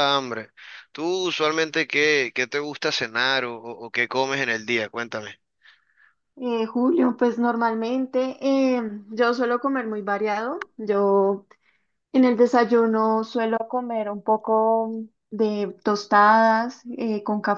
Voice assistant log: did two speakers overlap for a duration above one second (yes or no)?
no